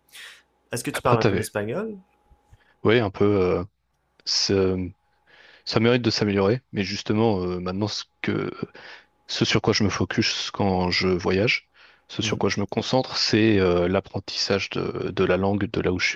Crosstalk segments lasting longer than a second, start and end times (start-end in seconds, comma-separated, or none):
none